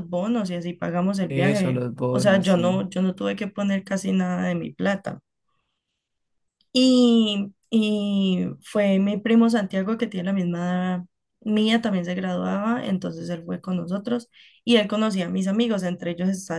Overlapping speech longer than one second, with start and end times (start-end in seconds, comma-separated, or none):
1.3-2.9